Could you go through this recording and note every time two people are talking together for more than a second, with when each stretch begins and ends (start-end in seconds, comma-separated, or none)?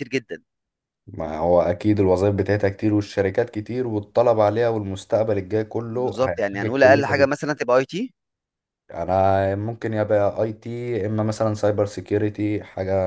5.9-7.3